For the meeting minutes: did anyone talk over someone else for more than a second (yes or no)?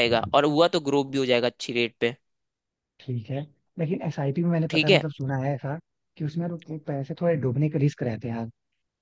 no